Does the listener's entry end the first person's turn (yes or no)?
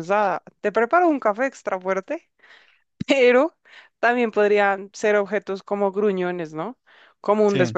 no